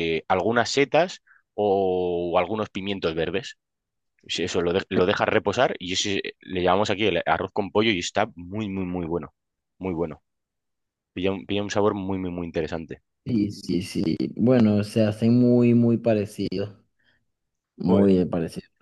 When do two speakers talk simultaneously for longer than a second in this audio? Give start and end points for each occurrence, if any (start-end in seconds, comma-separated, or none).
none